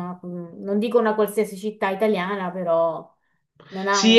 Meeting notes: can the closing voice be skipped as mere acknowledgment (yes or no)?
no